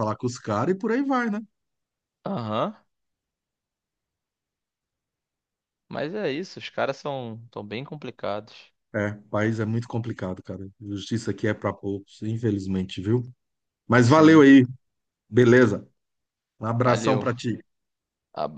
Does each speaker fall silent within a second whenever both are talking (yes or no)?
yes